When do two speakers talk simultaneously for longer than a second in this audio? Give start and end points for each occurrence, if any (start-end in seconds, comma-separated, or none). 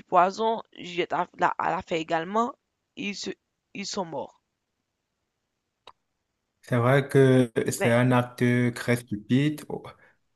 none